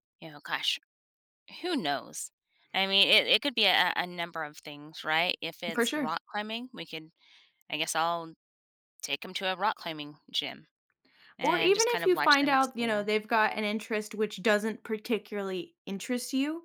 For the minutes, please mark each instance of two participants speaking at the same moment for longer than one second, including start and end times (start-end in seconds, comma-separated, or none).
11.4-13.0